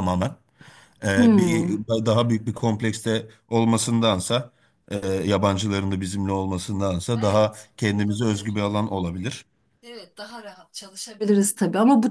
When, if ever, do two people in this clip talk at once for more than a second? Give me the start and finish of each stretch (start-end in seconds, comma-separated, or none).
6.7-8.6